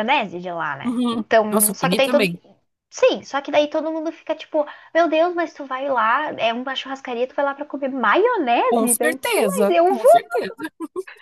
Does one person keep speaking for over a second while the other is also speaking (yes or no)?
yes